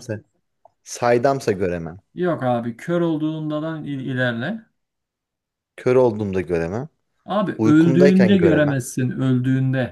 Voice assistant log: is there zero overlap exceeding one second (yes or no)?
no